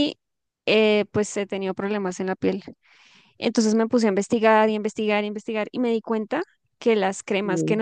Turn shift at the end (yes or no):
no